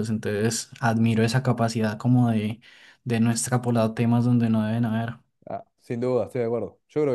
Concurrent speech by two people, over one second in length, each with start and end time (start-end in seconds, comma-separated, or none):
none